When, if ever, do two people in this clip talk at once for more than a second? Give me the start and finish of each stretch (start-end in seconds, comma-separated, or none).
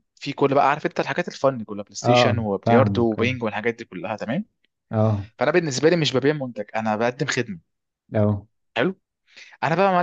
2.0-3.4